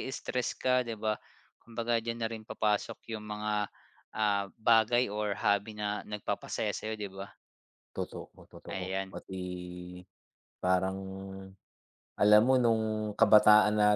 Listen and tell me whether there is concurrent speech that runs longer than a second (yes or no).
no